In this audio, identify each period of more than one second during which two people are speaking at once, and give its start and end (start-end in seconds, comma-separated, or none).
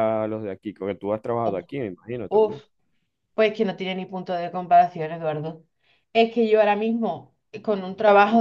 none